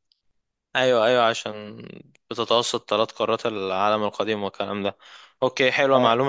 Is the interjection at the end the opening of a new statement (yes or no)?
no